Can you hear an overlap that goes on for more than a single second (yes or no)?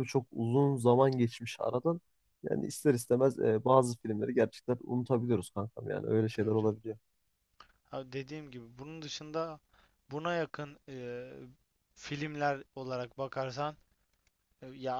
no